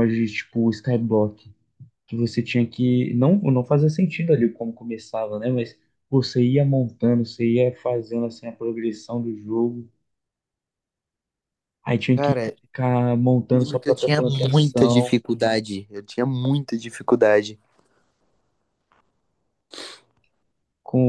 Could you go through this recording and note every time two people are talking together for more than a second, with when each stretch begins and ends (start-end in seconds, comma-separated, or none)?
13.5-15.2